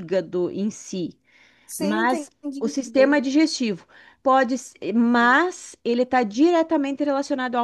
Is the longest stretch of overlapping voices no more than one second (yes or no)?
no